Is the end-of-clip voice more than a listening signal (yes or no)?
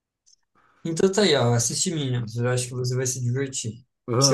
yes